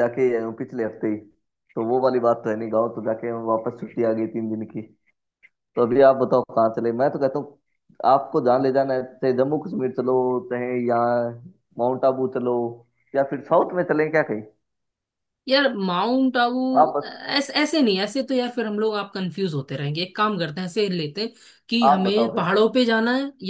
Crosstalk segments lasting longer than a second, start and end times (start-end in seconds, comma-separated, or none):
none